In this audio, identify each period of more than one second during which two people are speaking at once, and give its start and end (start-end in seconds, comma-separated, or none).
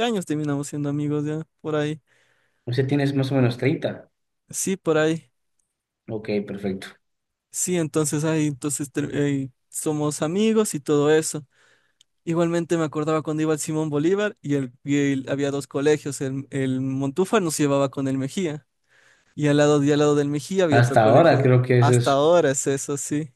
20.7-22.2